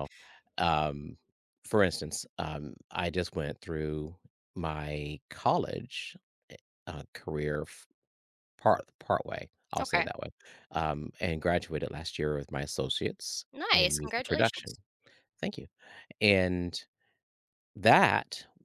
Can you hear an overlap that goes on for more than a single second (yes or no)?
yes